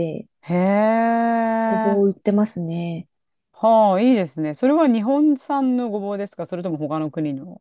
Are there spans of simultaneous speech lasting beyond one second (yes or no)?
no